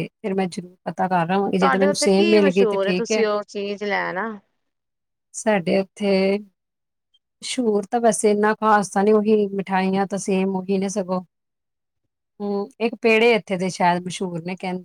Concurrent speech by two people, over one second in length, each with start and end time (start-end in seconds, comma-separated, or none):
1.6-3.2